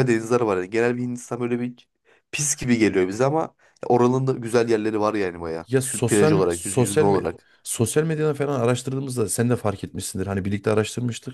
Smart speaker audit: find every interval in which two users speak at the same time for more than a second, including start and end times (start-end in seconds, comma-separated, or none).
6.1-7.3